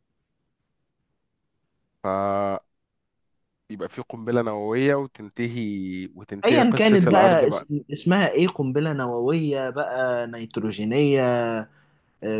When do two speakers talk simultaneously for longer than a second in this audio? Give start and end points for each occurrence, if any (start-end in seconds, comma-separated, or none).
6.5-7.7